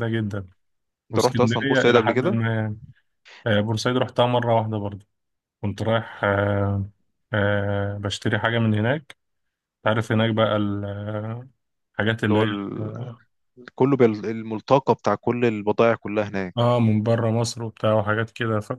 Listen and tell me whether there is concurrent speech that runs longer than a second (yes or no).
yes